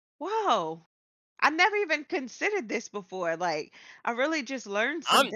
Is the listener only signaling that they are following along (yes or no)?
no